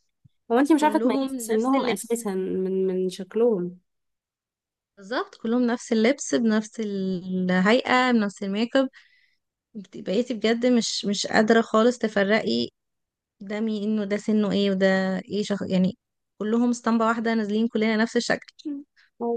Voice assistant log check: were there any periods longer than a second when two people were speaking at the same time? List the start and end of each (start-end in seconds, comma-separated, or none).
0.8-2.2